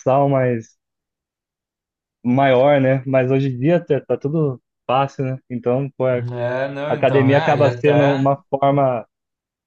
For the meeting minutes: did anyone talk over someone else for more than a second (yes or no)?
yes